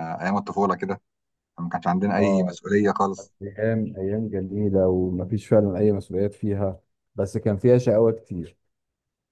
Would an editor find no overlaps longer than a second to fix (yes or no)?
yes